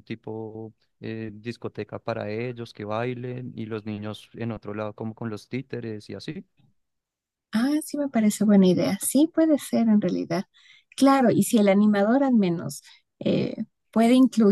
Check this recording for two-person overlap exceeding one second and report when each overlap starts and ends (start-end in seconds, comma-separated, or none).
none